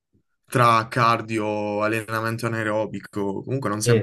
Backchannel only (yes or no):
no